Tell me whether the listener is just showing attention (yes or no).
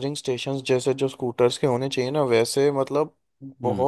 yes